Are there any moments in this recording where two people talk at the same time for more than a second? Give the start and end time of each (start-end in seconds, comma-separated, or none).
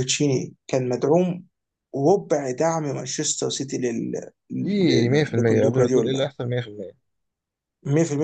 4.6-6.3